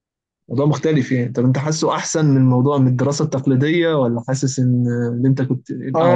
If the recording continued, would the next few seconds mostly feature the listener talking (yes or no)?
yes